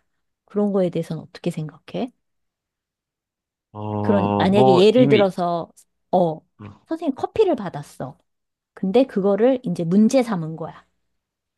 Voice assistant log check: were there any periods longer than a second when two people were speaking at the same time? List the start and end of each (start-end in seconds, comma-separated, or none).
4.0-5.3